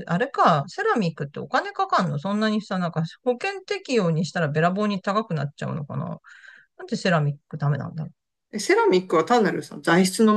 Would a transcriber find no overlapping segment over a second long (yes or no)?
yes